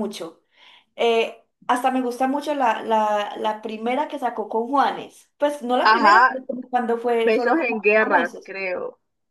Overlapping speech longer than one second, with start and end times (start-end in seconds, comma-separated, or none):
7.2-8.5